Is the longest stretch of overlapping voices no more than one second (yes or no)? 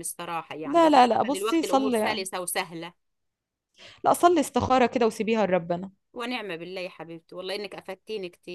no